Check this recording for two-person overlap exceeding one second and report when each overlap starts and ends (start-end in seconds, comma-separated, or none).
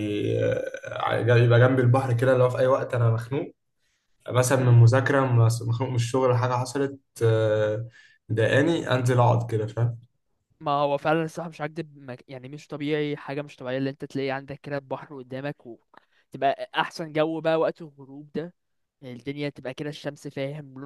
none